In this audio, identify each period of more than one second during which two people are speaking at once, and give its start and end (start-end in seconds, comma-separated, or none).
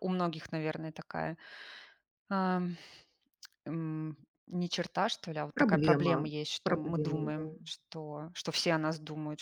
5.5-7.4